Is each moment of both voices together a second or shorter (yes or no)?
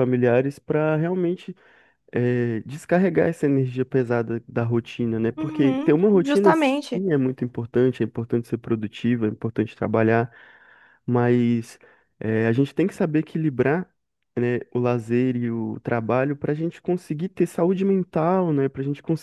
no